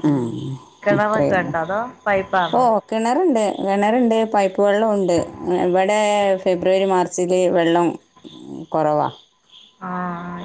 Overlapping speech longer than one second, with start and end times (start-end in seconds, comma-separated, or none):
none